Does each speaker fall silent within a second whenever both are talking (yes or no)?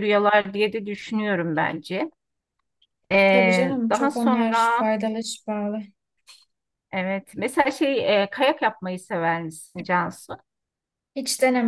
no